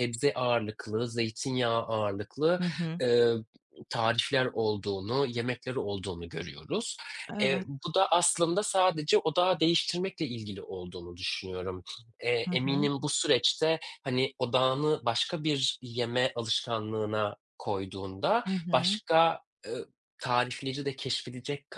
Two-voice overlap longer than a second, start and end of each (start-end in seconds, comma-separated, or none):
none